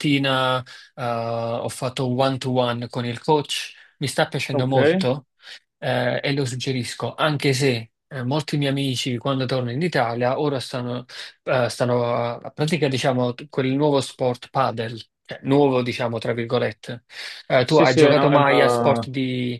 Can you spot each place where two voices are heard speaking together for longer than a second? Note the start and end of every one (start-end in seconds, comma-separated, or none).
17.6-19.1